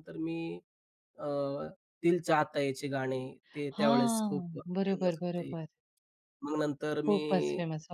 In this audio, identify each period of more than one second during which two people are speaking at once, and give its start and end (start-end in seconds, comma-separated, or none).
3.8-5.5